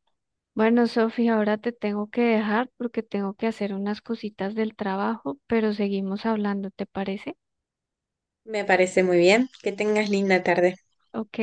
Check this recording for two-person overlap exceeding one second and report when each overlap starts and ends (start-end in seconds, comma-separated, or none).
none